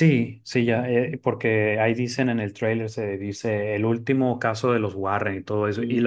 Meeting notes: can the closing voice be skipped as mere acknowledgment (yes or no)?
yes